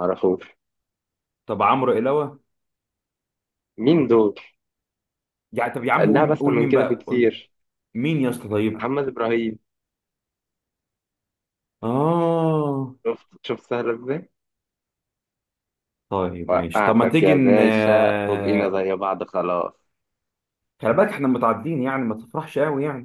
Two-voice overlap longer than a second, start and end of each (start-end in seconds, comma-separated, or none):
6.0-7.3, 16.5-18.8